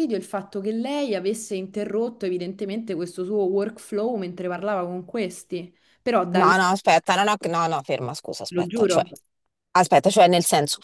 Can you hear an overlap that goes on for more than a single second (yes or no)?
no